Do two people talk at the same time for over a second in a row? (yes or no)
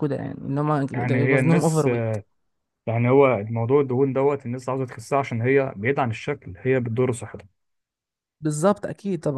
no